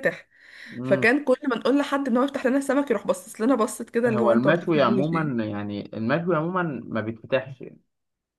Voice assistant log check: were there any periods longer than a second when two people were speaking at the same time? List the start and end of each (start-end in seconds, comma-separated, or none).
4.1-5.3